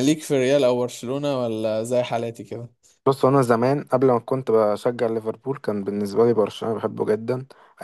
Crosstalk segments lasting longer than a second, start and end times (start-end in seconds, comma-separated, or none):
none